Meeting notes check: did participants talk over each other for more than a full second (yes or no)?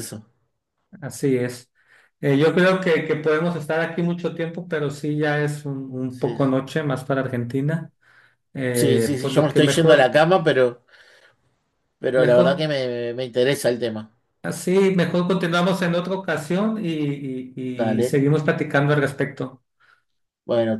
yes